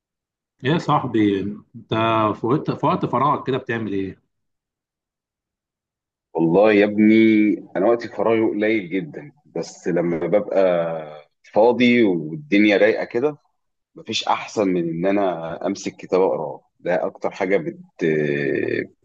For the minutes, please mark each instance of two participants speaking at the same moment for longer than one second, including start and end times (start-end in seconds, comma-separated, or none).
none